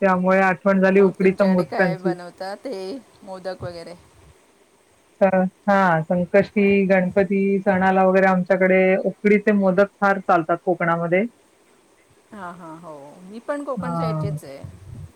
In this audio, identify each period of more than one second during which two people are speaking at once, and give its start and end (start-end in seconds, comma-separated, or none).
none